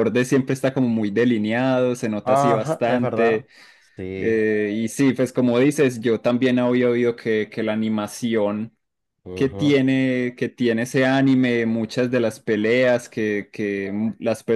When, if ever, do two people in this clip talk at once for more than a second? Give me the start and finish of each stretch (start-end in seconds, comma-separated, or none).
2.2-3.5